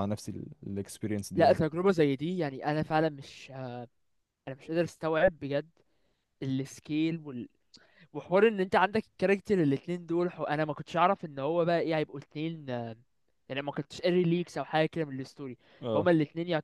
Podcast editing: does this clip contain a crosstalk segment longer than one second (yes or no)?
no